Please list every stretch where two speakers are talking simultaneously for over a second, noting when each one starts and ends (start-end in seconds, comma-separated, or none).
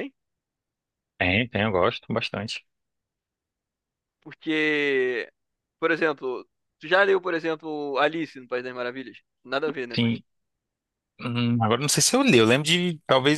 none